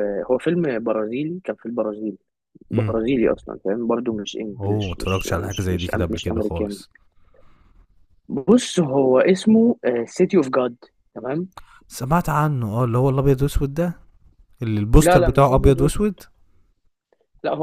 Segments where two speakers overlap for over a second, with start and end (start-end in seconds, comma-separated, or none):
4.6-6.8, 15.0-16.2